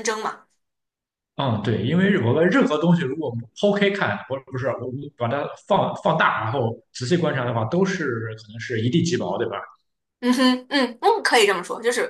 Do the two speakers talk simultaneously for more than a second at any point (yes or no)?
no